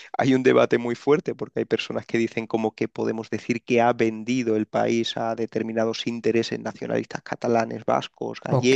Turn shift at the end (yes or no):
yes